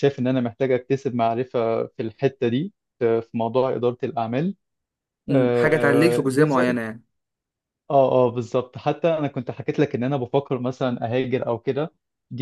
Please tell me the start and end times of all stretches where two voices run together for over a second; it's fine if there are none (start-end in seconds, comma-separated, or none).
5.3-6.8